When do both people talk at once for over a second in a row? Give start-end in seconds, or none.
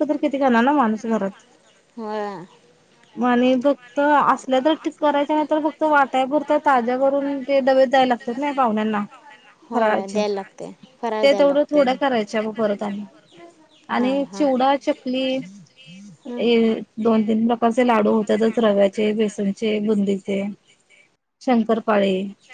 none